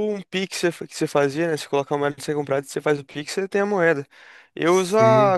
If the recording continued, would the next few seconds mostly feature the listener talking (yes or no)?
no